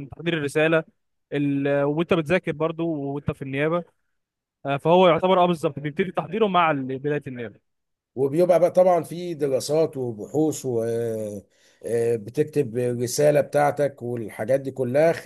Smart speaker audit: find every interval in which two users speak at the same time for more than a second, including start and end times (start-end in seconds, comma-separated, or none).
none